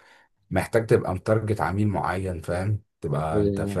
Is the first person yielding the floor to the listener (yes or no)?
no